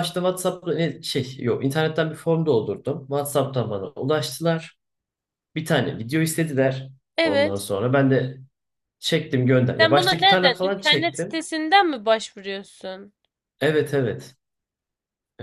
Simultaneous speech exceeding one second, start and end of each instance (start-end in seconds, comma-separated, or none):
9.8-11.4